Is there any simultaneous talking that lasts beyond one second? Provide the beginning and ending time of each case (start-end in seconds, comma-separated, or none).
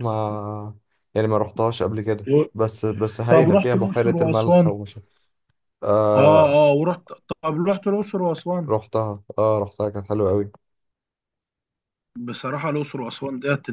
3.3-4.7